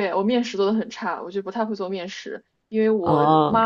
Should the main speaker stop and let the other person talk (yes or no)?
no